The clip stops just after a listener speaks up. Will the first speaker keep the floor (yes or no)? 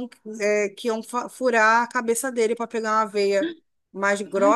yes